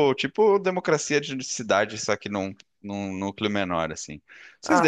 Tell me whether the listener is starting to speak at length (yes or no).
no